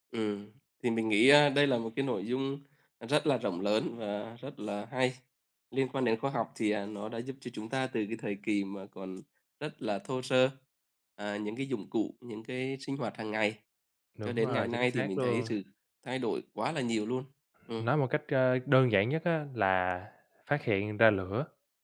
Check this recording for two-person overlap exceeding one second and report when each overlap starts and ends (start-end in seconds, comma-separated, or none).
14.2-15.5